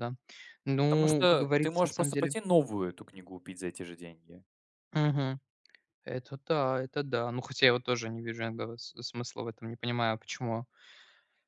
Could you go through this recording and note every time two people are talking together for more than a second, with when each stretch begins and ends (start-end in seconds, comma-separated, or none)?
0.9-2.4